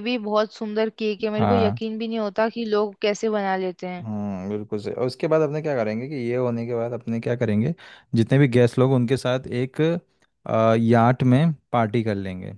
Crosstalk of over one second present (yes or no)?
no